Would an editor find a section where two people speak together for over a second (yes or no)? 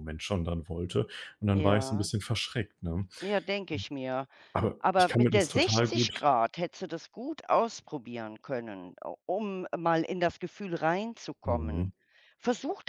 yes